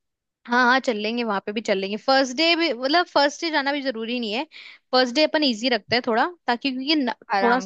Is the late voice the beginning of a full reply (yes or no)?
no